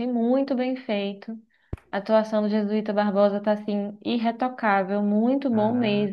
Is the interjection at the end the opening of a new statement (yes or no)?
yes